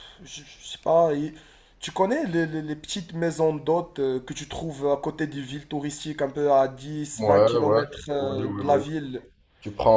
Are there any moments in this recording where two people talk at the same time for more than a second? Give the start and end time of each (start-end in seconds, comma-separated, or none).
7.2-8.8